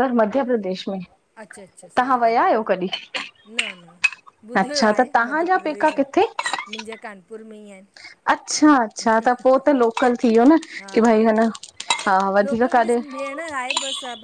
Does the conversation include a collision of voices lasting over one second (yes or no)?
yes